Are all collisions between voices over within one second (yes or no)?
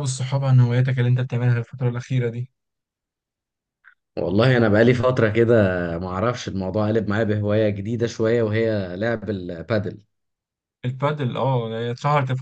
yes